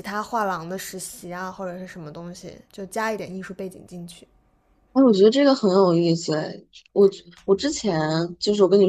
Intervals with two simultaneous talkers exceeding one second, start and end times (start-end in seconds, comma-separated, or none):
none